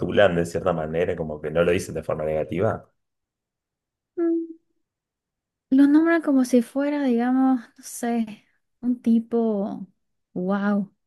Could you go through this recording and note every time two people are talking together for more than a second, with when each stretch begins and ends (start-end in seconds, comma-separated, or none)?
none